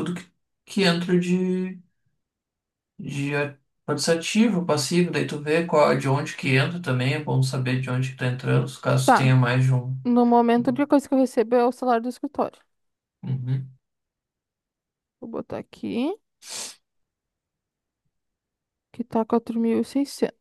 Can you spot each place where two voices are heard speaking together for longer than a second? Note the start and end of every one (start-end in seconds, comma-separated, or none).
none